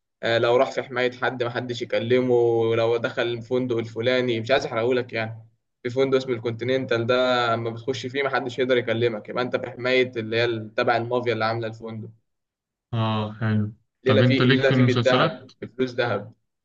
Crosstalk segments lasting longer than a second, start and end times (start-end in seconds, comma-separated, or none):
14.0-15.4